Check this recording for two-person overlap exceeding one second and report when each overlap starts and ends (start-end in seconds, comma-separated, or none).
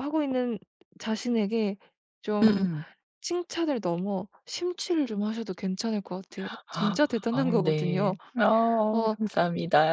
6.7-8.1